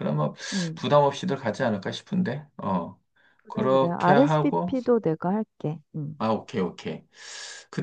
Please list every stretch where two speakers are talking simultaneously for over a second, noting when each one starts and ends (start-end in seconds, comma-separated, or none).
3.5-4.8